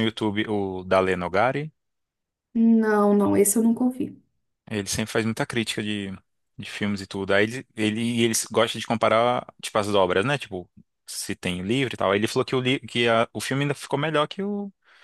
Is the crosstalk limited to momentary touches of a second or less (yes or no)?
yes